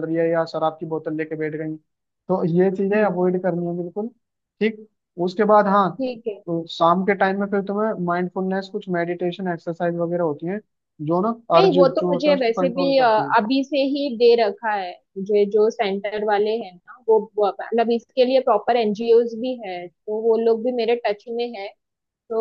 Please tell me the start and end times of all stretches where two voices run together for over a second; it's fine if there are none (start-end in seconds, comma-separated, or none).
11.6-13.3